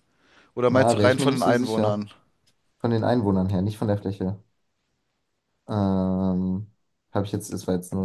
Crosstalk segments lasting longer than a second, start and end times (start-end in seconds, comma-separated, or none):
0.7-2.1